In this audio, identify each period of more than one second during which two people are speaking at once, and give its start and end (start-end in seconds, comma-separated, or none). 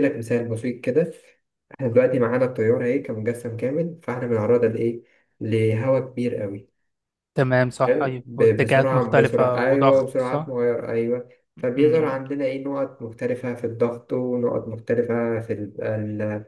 7.9-10.5